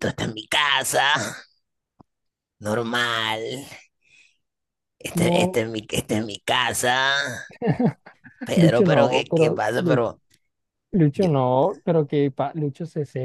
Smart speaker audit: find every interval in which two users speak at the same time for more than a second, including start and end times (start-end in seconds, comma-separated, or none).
8.6-10.1